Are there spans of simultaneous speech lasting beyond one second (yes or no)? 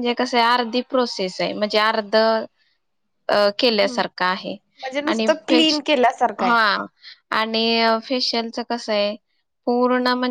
yes